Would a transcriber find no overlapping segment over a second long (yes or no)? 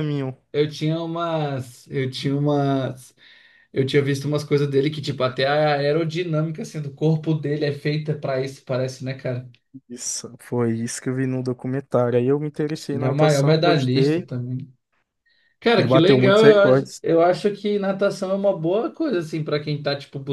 no